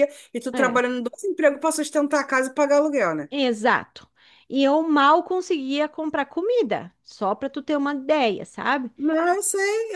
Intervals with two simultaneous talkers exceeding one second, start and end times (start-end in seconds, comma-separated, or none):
none